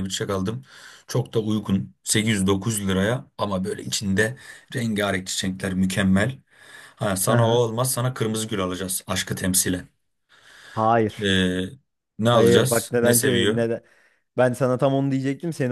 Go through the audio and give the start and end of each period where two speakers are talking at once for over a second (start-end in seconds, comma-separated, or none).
12.3-13.6